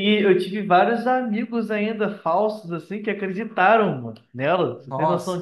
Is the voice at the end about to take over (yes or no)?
yes